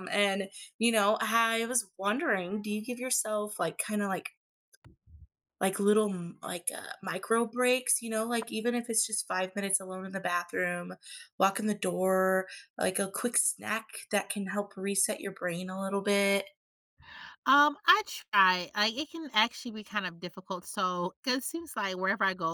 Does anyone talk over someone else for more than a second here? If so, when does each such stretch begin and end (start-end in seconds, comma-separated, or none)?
none